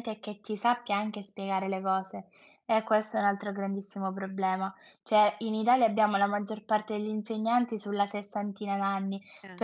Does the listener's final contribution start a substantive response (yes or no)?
no